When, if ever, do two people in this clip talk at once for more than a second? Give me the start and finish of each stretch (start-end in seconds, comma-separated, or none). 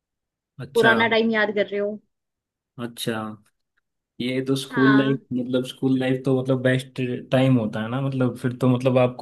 none